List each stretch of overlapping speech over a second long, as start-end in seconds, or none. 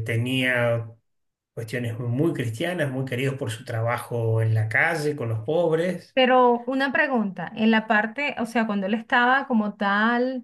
none